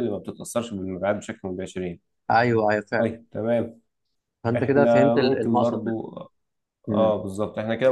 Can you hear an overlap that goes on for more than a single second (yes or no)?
yes